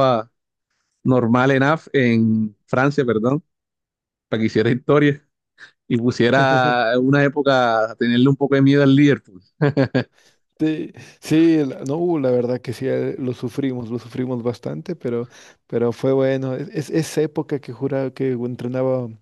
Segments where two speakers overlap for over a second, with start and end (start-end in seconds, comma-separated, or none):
none